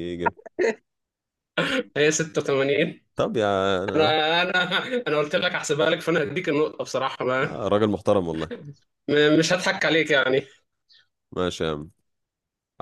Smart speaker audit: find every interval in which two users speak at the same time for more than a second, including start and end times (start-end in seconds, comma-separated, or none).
none